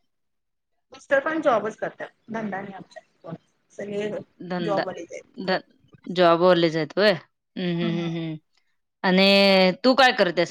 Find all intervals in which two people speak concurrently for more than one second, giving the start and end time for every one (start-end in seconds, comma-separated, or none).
none